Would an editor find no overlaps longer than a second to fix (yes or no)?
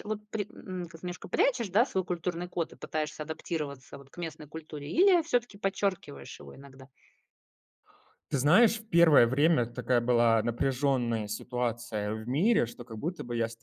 yes